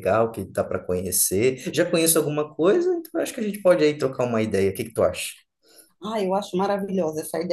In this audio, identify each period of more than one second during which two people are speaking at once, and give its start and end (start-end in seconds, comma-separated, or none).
none